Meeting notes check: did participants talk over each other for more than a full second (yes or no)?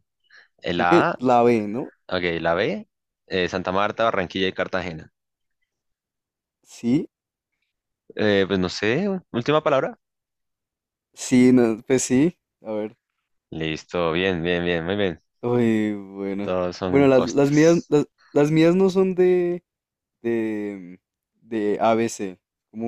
yes